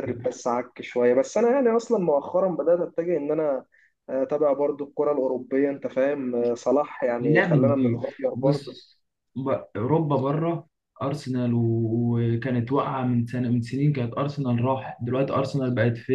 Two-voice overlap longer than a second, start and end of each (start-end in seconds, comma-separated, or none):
7.2-8.8